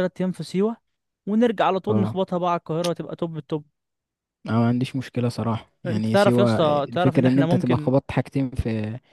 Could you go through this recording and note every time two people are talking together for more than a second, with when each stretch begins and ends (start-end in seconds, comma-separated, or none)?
5.8-7.9